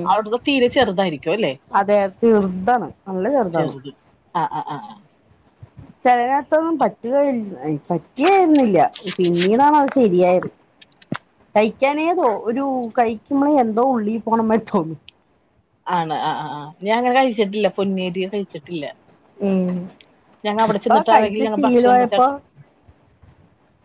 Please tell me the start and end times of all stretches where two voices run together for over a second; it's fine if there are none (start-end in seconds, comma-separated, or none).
20.7-22.1